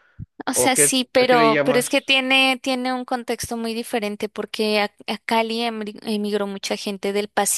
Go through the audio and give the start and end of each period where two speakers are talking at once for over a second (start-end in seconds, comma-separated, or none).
0.5-2.2